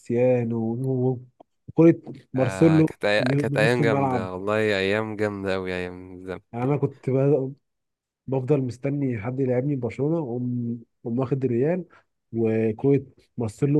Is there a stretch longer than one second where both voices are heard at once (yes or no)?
yes